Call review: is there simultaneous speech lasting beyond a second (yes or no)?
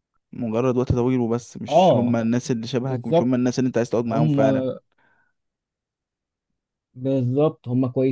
no